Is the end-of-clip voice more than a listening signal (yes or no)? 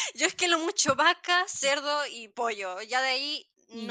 no